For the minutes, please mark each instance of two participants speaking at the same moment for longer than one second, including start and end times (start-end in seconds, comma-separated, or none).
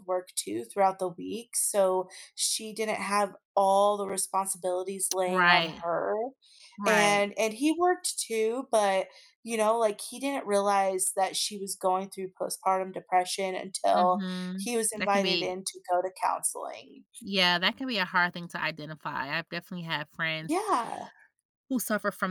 13.9-15.6